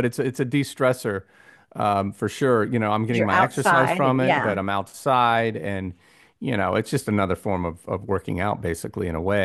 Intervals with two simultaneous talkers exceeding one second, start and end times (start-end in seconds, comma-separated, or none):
3.0-4.6